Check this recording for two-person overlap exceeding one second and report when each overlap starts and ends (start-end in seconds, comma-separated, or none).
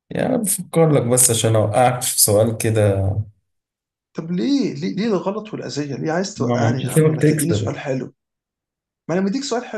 6.3-7.7